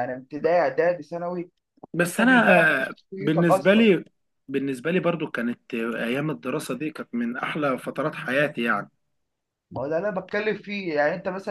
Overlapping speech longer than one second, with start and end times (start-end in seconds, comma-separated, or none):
2.0-3.9